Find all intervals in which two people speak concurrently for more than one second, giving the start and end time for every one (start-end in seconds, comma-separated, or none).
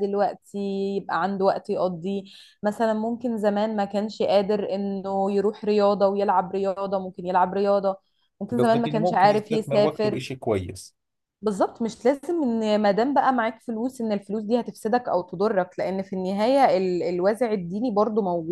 8.6-10.2